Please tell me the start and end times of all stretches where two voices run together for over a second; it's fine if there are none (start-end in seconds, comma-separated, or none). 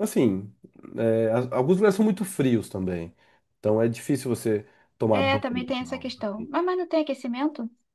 5.1-6.5